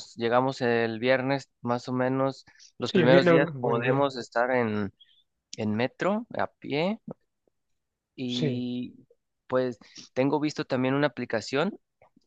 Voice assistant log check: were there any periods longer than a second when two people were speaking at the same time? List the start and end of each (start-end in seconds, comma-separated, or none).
2.9-4.1